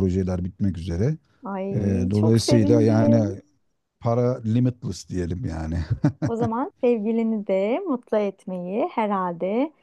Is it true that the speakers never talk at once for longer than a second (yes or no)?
no